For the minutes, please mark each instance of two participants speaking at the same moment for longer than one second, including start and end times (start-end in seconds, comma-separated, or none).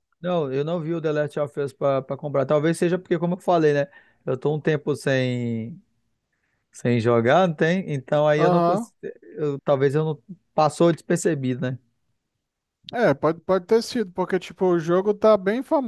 none